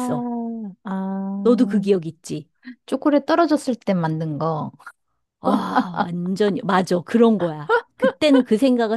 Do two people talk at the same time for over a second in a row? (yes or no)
no